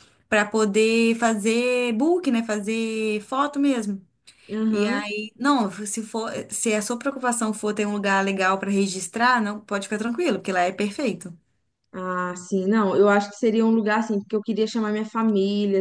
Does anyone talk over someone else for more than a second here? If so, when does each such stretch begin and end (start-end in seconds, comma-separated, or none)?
none